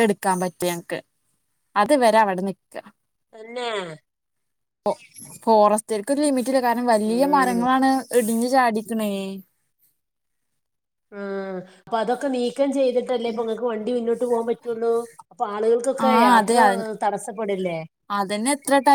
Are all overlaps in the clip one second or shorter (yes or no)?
yes